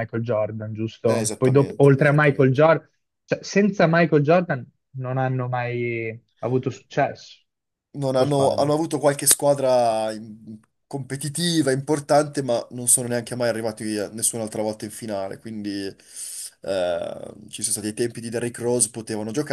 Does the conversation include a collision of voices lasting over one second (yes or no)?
yes